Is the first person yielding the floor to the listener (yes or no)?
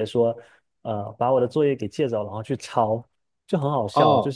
no